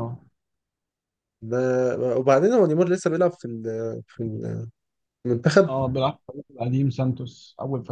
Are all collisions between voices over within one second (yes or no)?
yes